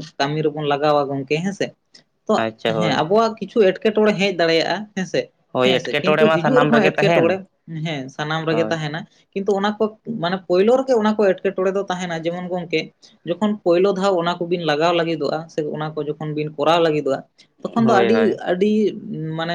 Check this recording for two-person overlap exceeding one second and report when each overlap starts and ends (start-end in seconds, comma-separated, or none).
5.5-7.4